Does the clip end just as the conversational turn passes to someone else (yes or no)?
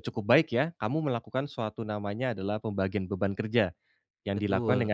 no